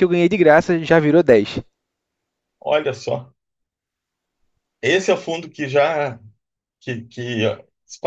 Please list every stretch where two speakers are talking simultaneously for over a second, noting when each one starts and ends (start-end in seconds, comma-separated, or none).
none